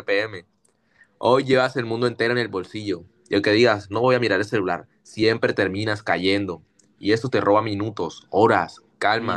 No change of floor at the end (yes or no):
no